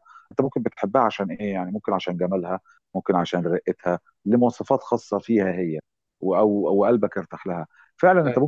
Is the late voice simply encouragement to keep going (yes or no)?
yes